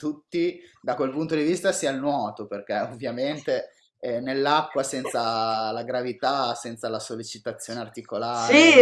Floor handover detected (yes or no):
yes